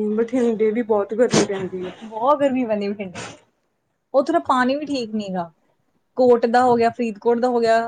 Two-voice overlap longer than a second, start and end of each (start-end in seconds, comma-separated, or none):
none